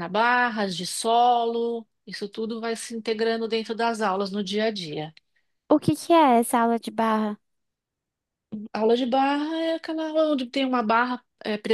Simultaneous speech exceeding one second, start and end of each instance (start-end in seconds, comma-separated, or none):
none